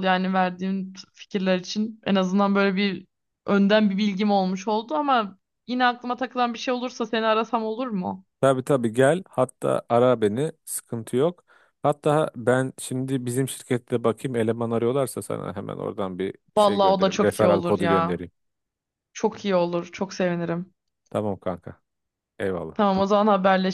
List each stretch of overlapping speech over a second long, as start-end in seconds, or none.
16.6-18.2